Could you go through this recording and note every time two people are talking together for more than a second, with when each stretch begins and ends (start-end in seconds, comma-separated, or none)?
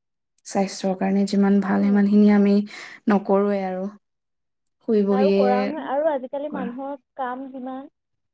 none